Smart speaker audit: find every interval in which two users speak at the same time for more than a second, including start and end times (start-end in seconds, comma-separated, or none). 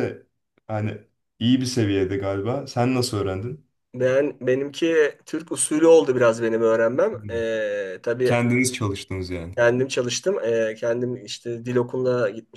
none